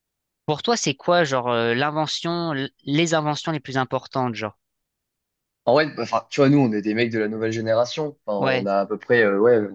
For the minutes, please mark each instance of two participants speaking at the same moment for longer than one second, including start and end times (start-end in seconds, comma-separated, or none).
none